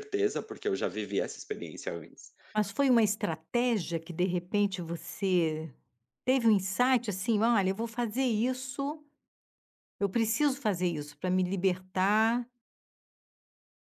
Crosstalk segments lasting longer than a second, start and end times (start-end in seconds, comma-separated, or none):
none